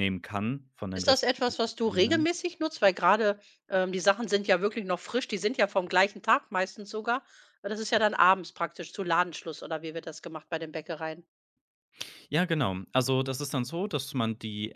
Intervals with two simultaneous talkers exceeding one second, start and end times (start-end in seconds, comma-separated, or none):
0.9-2.3